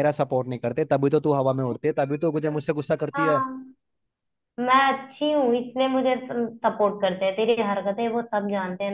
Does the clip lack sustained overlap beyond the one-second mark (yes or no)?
yes